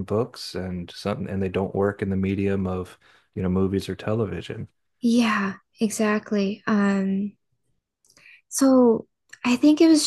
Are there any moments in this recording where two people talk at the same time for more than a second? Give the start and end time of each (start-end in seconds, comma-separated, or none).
none